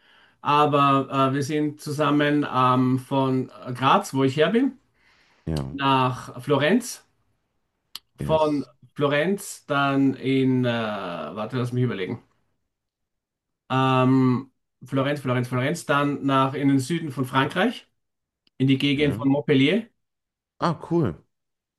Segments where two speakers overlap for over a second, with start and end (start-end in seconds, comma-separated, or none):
none